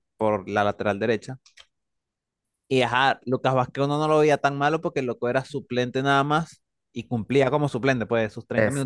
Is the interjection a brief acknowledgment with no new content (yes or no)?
yes